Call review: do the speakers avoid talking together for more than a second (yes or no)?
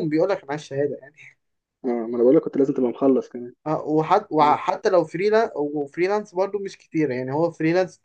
yes